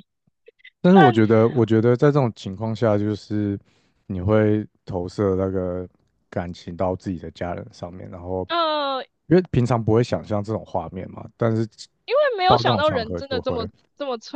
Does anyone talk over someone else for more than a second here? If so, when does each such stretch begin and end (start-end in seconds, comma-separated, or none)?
12.5-13.7